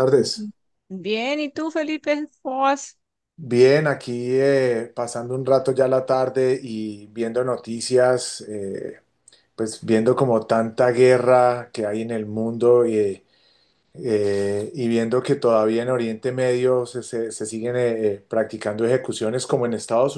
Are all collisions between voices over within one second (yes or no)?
yes